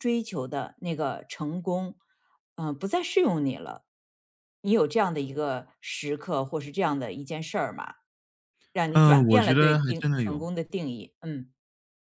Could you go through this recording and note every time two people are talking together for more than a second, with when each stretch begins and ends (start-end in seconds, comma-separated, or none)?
8.9-10.4